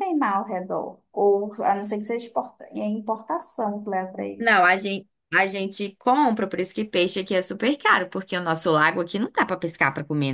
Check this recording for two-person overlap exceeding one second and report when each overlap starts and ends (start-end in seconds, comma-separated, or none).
none